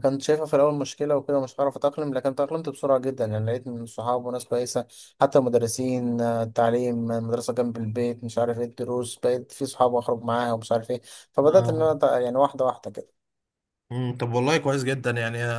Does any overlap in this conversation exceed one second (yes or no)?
no